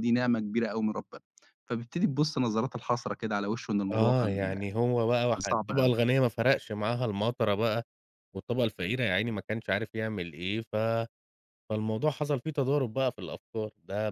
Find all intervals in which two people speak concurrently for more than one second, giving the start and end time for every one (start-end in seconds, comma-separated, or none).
none